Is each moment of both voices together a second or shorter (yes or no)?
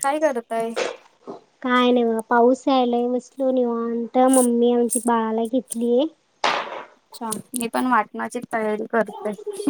yes